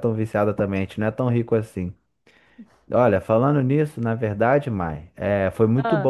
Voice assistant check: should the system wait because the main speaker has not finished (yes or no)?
yes